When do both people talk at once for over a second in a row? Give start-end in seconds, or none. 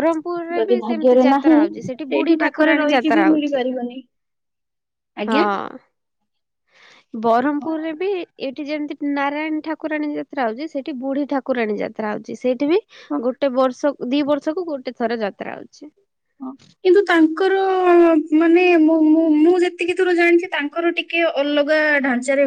0.6-3.6